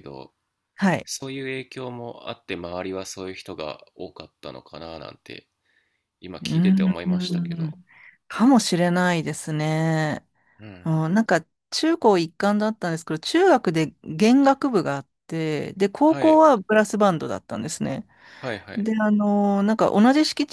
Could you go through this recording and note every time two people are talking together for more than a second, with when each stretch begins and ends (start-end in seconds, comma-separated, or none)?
6.4-7.8